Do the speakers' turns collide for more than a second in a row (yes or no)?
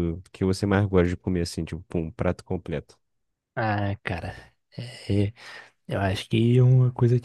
no